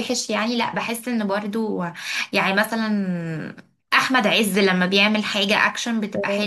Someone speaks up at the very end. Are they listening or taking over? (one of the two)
taking over